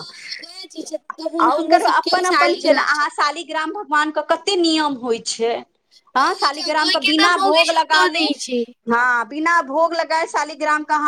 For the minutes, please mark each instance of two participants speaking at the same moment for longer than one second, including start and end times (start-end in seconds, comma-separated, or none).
6.2-8.2